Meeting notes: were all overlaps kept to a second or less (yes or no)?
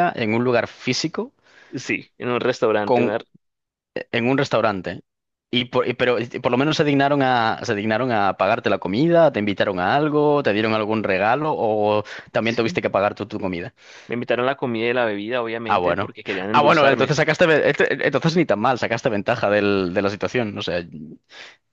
no